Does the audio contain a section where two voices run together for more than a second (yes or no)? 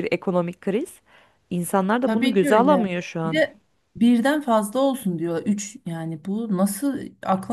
yes